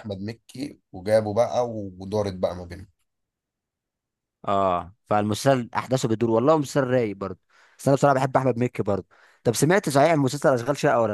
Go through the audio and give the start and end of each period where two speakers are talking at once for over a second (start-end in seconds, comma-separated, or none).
none